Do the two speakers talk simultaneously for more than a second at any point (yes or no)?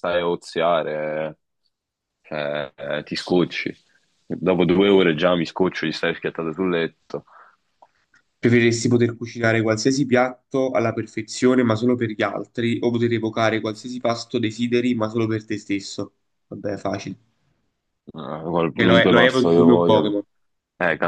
yes